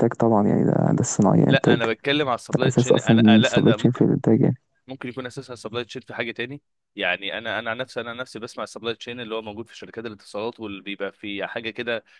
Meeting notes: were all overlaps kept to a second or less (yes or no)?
no